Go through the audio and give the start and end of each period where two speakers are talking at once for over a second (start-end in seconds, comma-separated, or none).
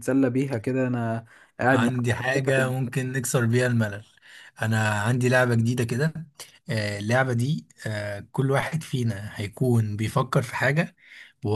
none